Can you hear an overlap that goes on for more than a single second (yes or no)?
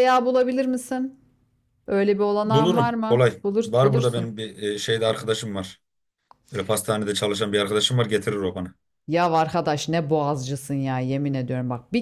yes